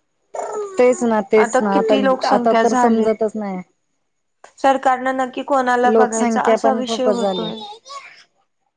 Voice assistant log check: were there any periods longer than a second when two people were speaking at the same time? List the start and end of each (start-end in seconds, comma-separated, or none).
5.9-7.5